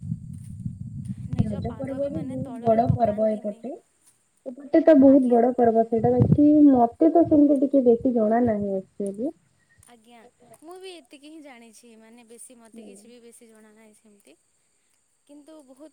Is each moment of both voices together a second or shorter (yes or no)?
no